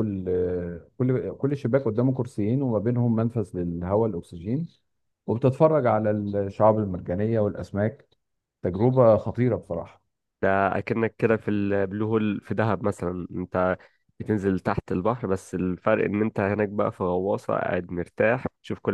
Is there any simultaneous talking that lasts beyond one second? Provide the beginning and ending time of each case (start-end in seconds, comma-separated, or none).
none